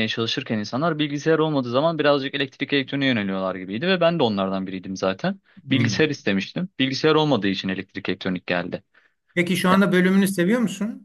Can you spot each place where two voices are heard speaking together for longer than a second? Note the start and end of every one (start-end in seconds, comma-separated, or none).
none